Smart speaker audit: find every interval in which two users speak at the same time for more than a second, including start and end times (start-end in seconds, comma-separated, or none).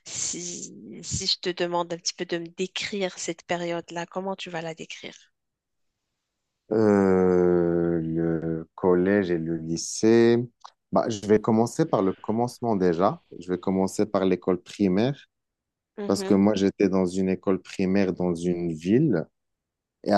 none